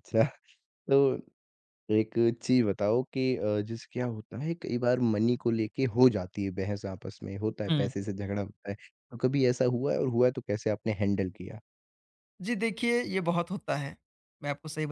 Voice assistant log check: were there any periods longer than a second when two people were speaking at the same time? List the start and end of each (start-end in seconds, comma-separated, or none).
none